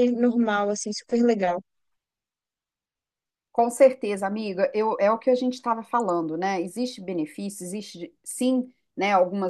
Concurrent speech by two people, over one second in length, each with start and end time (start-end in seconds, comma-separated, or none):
none